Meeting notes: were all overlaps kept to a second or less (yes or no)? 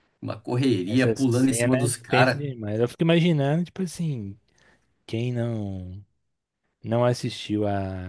no